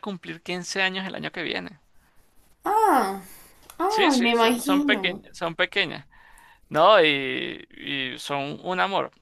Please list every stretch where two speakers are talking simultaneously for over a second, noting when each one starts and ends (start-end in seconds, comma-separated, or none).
3.9-5.2